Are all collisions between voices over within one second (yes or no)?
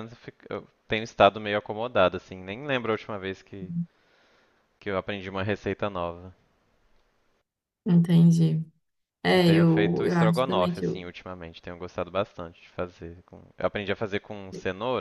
no